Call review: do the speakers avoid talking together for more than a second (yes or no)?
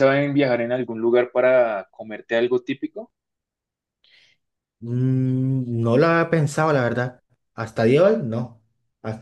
yes